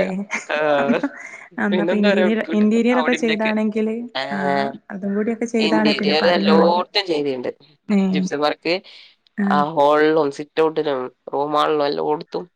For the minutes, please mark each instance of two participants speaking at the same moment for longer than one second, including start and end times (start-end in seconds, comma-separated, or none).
1.7-3.5